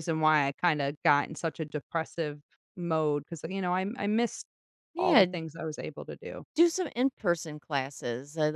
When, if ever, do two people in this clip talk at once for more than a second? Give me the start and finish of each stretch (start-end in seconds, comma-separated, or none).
none